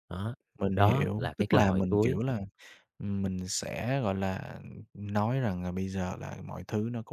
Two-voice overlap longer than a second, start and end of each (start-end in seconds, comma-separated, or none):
0.8-2.2